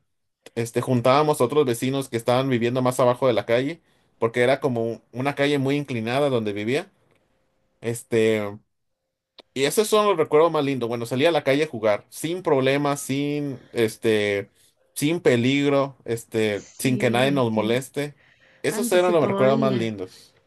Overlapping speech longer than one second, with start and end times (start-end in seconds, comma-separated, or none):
16.5-17.7, 18.7-19.9